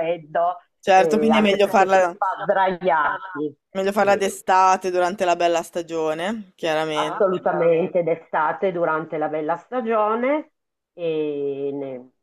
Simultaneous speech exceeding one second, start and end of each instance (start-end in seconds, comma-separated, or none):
0.9-2.2